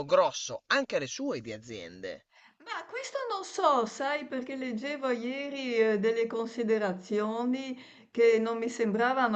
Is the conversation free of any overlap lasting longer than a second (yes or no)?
yes